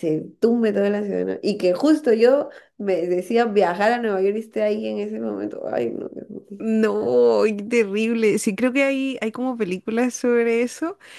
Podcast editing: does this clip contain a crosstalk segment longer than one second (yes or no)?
no